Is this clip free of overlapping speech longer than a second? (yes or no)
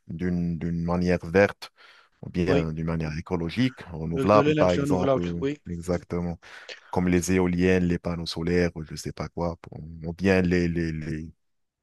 no